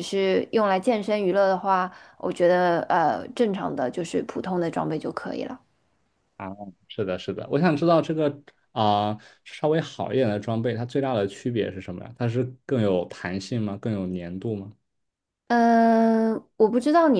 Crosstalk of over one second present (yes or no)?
no